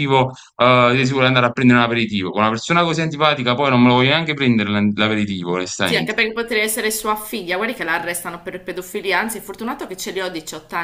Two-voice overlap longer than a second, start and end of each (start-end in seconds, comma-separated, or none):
none